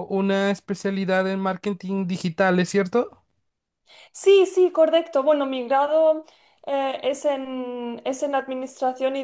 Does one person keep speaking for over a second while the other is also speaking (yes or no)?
no